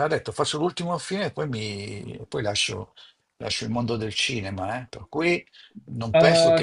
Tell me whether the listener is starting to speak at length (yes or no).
yes